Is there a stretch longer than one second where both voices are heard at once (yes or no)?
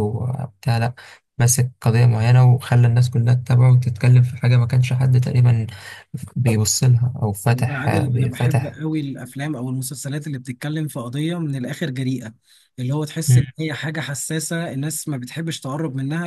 yes